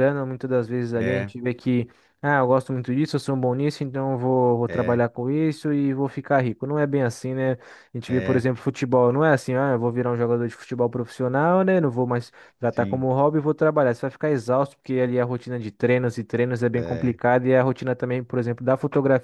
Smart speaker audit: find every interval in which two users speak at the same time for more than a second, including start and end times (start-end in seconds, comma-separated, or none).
none